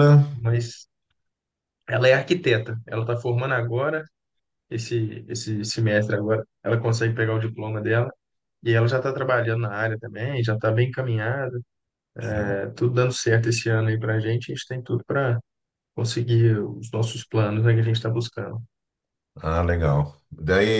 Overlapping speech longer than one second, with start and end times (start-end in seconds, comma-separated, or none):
none